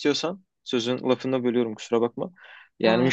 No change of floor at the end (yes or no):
yes